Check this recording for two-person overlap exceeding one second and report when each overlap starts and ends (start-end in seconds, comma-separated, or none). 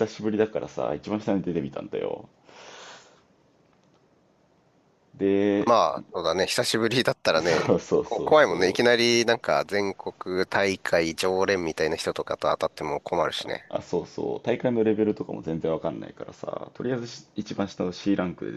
7.4-9.1